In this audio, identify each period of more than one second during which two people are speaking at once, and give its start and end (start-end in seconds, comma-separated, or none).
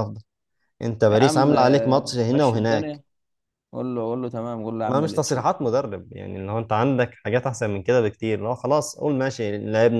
1.1-3.0